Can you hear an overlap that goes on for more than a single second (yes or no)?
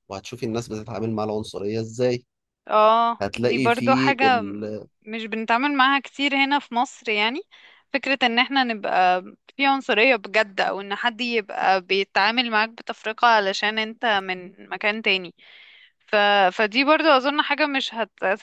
yes